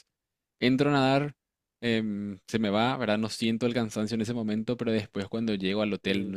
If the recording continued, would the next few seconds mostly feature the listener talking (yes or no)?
no